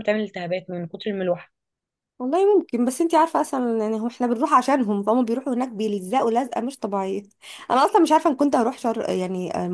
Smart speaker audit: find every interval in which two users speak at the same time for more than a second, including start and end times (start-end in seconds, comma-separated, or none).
none